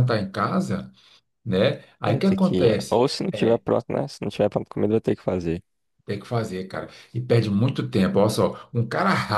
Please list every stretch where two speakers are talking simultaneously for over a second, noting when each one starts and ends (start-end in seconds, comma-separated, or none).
2.0-3.6